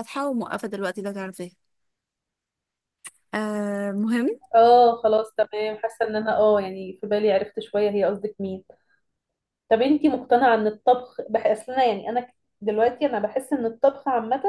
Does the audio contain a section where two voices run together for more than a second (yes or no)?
no